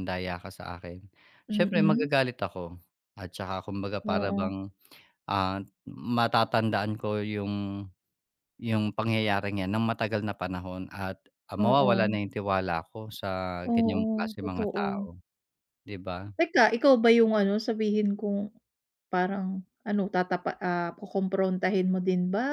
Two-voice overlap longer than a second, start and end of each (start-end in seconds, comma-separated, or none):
13.6-15.1